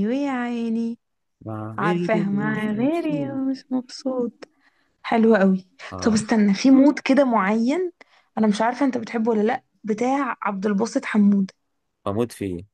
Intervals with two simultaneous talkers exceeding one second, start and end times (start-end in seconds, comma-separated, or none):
1.8-3.4